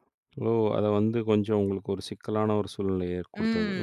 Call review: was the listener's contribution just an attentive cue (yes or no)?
no